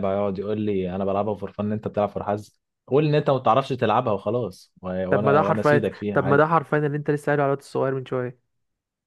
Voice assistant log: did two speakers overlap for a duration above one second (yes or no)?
yes